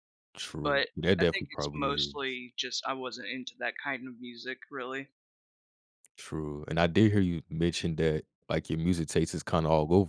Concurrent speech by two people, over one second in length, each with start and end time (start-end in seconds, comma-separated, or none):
0.6-2.4